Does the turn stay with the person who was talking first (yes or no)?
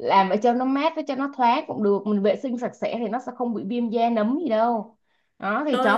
yes